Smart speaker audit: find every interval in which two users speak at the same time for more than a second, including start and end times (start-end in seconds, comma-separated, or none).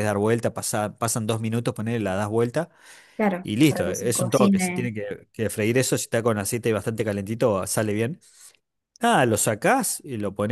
3.4-4.9